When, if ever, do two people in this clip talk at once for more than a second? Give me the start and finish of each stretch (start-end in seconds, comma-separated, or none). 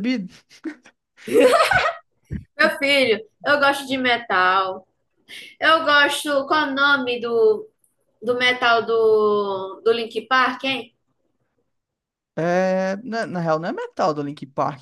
none